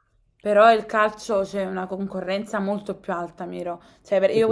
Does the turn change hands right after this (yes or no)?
no